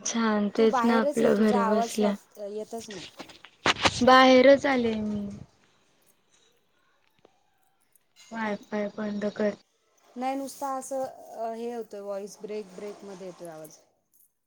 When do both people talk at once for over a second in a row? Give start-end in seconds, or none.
0.6-2.1